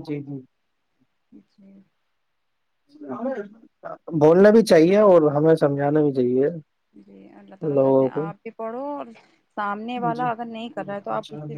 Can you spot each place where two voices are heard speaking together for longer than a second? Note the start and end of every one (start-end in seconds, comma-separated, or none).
none